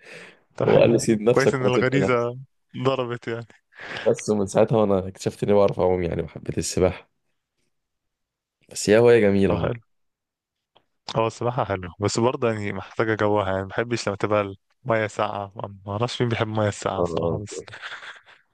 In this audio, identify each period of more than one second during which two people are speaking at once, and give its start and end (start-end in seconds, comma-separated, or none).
0.6-2.3